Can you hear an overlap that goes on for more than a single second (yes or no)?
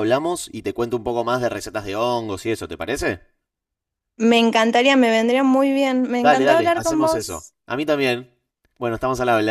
yes